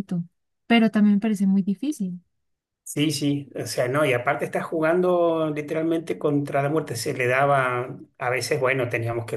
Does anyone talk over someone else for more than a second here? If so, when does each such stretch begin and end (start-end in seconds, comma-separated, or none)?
none